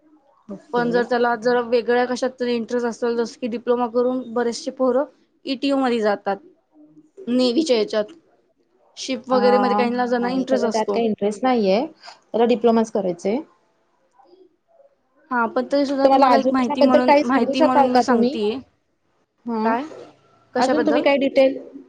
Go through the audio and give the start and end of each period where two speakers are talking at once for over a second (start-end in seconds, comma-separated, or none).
9.3-11.0